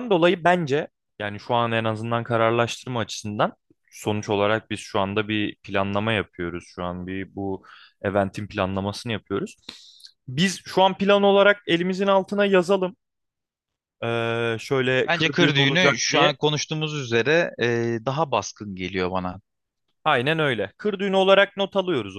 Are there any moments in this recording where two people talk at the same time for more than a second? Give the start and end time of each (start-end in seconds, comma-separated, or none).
15.1-16.3